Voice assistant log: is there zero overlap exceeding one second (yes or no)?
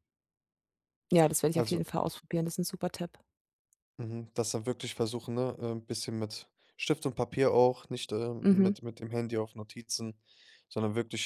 yes